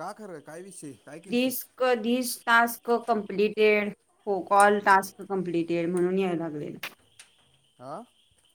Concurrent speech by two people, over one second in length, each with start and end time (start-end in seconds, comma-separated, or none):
none